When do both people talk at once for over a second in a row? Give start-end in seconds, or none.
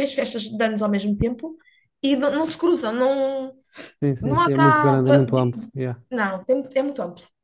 4.2-5.5